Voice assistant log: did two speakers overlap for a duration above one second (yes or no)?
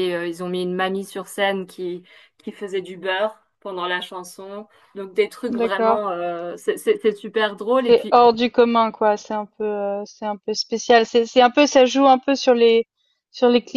no